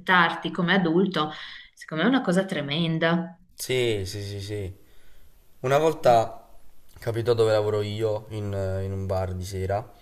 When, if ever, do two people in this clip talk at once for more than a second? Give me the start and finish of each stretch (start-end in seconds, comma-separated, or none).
none